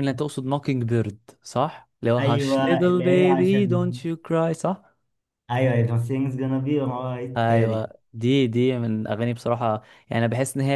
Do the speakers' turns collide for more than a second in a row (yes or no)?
yes